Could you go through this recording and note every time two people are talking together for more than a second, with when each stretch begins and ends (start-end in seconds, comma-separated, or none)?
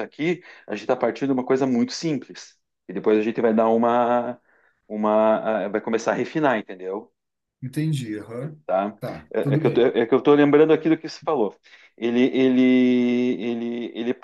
none